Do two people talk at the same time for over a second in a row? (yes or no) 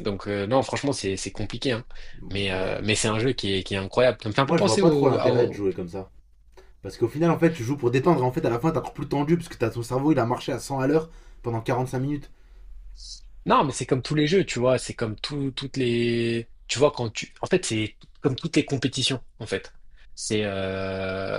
yes